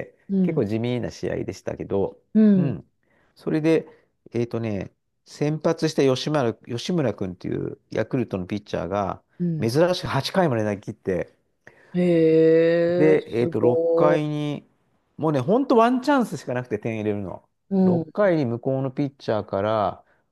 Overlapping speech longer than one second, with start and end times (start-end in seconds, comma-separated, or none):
12.9-14.2